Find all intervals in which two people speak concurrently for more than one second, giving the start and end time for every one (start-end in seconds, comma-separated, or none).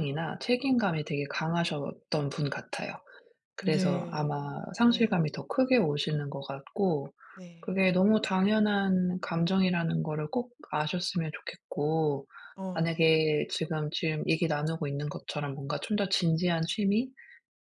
3.6-5.2